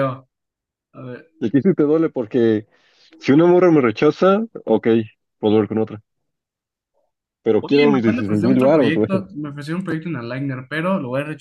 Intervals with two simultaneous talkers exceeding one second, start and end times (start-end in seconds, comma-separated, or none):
7.6-9.1